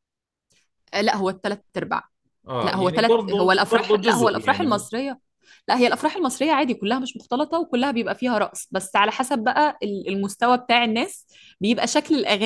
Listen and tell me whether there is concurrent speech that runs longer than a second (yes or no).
yes